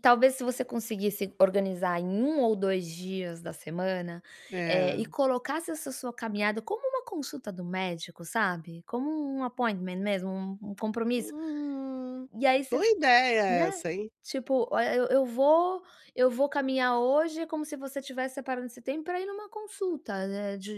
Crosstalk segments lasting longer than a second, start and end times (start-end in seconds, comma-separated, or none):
none